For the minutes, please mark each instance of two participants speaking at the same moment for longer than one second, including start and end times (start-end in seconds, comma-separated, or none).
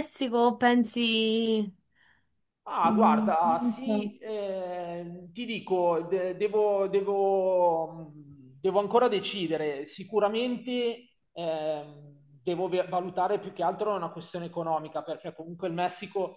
2.8-4.2